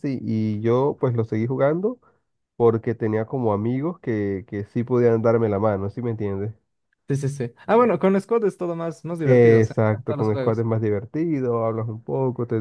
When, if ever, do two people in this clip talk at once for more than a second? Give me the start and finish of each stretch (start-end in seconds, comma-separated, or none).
9.3-10.7